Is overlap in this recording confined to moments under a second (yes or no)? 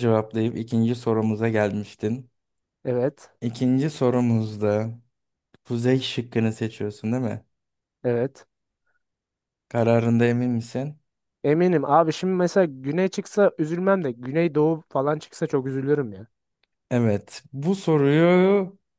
yes